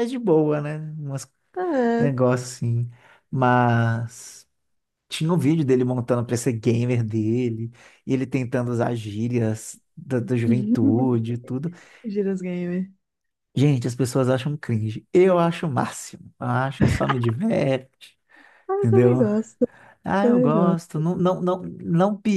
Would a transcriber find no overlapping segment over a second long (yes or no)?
yes